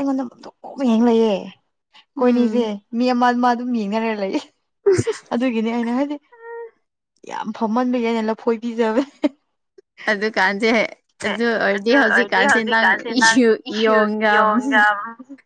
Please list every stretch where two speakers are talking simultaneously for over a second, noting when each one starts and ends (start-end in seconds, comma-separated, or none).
none